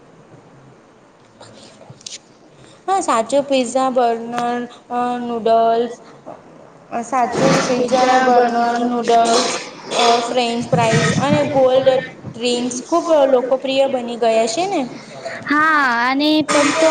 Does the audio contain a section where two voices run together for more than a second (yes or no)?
yes